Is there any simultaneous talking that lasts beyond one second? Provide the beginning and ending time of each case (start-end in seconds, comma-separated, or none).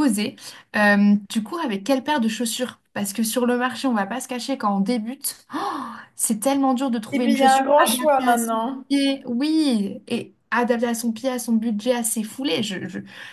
7.1-8.8